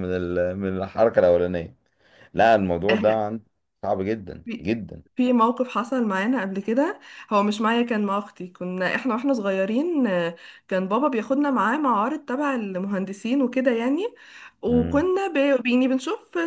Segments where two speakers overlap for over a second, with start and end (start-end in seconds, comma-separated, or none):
none